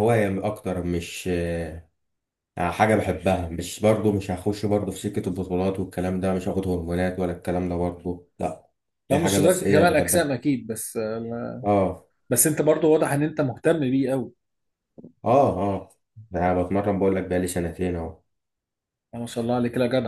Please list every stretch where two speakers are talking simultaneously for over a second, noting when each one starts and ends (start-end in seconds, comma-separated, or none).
9.1-10.3